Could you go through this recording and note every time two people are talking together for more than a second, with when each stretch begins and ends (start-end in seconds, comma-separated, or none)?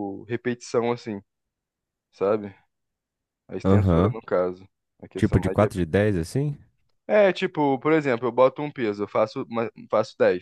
none